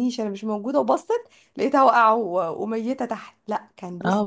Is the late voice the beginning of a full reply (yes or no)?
yes